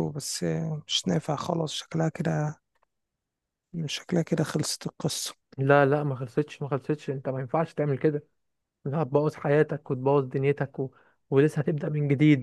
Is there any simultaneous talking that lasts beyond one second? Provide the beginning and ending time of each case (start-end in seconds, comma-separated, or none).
none